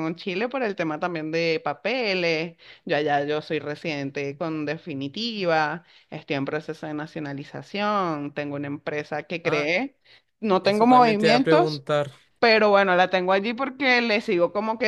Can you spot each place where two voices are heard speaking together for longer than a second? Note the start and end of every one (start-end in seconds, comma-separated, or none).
10.6-11.8